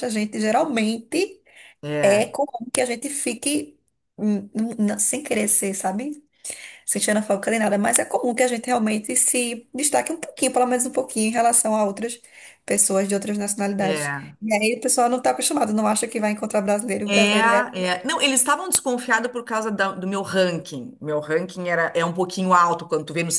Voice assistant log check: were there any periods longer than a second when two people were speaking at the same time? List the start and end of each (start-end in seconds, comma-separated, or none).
none